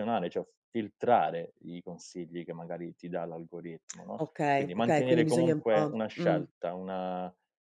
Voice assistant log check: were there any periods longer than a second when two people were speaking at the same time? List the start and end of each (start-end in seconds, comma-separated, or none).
4.2-6.5